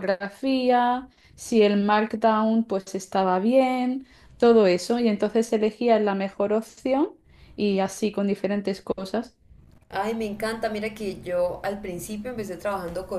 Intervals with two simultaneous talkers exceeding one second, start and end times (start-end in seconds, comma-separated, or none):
none